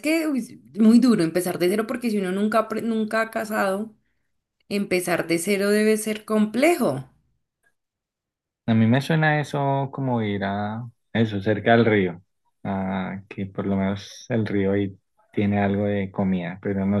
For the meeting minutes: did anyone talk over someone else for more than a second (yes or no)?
no